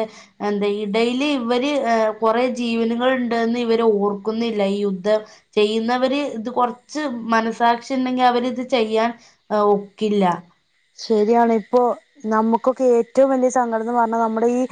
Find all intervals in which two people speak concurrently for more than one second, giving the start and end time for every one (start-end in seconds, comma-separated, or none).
none